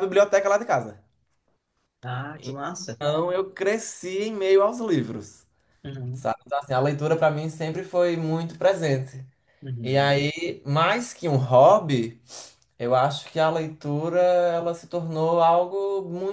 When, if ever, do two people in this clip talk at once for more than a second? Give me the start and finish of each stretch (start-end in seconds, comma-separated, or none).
none